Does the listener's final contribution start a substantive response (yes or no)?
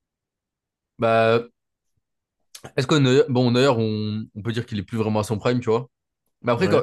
no